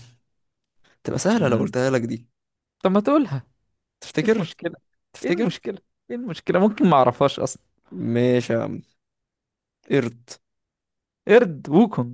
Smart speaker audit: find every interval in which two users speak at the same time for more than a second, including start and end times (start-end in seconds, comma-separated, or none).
none